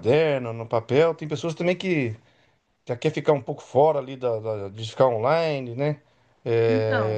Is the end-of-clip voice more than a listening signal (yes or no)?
no